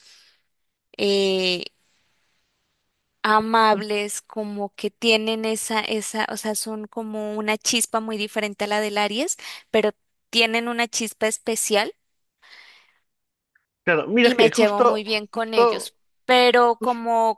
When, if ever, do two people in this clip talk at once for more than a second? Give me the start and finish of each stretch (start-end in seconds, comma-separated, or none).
14.2-15.9